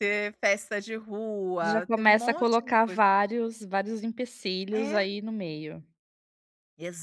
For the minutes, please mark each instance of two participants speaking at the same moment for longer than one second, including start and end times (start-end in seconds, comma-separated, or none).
1.6-3.0